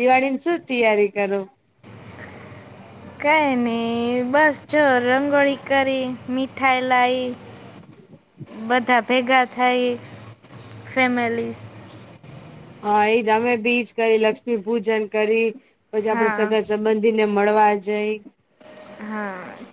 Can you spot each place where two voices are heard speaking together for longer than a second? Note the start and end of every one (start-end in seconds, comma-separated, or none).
none